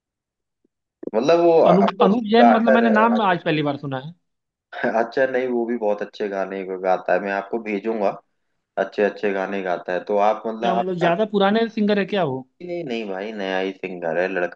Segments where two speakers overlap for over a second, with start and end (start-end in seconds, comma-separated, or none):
1.7-3.6